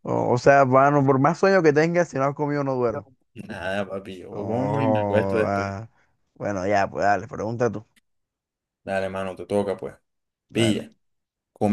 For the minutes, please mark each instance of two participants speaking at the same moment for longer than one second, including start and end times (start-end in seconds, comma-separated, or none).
4.3-5.7